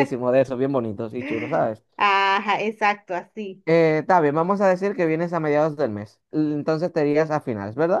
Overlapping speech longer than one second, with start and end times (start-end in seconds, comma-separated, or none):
none